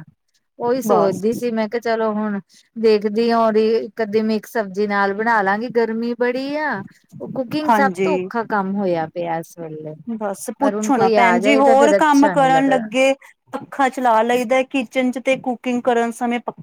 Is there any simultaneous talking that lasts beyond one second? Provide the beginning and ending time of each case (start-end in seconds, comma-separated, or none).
10.6-12.8